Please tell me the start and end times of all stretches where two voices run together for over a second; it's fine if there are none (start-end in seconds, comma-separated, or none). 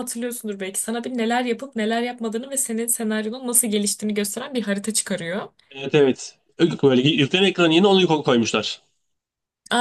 none